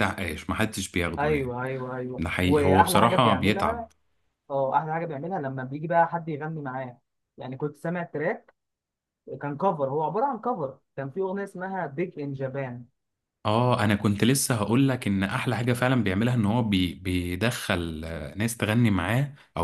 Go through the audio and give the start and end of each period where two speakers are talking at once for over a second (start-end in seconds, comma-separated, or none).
2.2-3.9